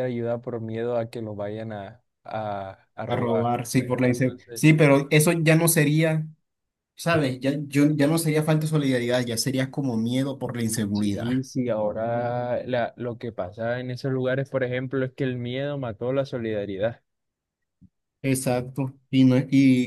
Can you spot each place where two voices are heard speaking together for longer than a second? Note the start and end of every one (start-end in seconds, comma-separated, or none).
3.1-4.6